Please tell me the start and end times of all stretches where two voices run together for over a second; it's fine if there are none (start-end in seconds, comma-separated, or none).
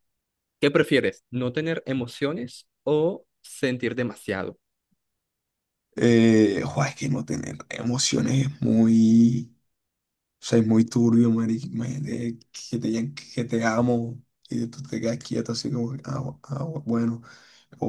none